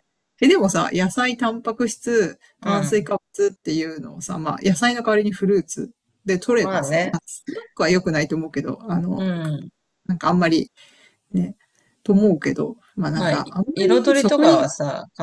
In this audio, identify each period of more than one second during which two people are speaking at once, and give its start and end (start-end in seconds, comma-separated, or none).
13.2-14.7